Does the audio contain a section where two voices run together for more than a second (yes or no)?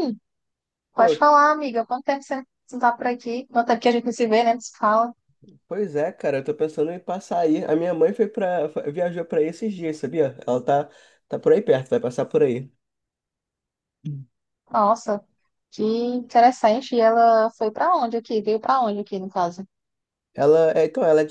no